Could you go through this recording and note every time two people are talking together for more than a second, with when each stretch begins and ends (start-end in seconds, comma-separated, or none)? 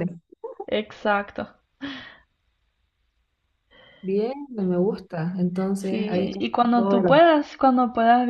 5.8-7.3